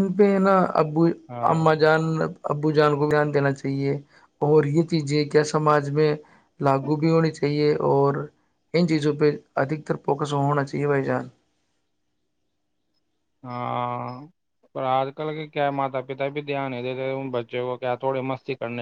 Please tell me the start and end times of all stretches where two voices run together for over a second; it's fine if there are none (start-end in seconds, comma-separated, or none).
none